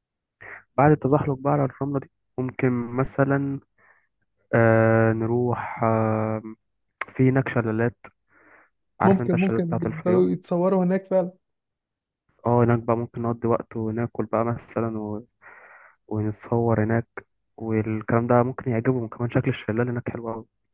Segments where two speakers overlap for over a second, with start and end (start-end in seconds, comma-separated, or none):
9.0-10.3